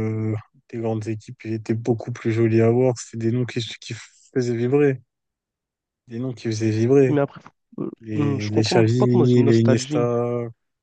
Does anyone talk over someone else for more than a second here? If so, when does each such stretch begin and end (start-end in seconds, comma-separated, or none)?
8.0-10.1